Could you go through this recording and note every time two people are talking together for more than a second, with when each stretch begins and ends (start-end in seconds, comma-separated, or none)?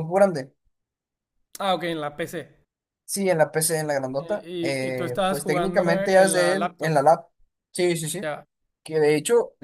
4.3-7.0